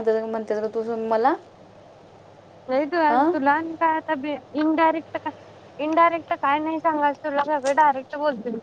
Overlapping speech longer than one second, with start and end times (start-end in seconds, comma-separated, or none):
none